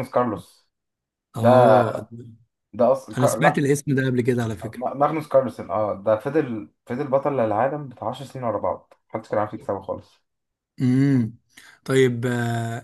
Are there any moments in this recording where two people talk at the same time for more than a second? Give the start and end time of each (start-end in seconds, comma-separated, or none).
none